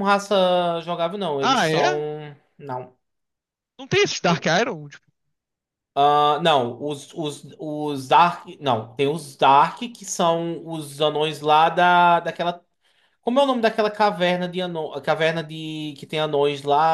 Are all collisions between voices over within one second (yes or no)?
yes